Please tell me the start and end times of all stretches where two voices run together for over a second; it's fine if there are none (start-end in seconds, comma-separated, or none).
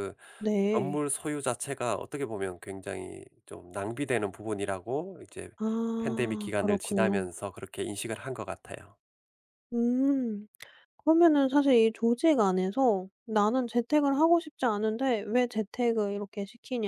6.0-7.3